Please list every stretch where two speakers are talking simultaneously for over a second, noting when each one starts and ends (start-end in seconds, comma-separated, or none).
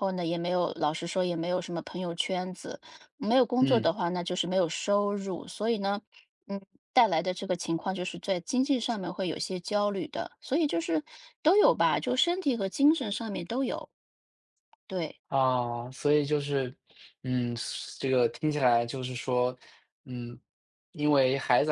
none